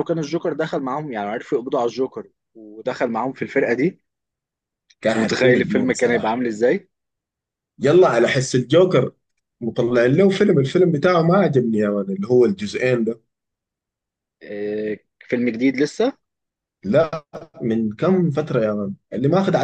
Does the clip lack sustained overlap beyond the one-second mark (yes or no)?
no